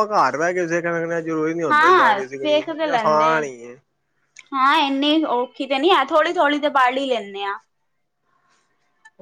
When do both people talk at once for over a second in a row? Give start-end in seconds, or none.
1.7-3.4